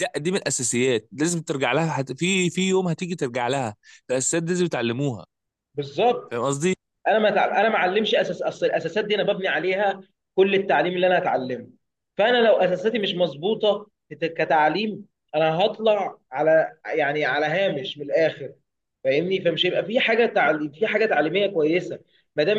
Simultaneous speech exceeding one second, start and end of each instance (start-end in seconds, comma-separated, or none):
none